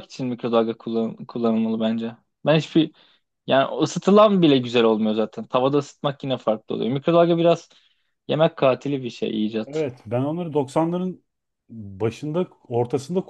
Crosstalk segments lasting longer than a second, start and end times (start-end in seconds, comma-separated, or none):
none